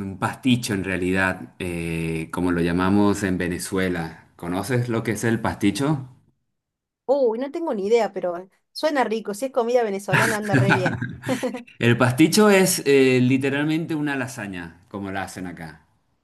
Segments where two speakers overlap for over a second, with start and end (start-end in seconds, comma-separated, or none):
none